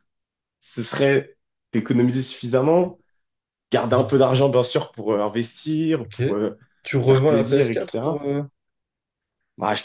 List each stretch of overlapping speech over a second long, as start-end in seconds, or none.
7.0-8.2